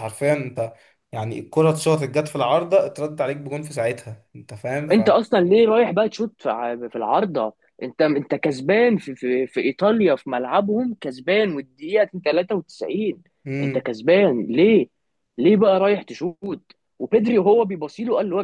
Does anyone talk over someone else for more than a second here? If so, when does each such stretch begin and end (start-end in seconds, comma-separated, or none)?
none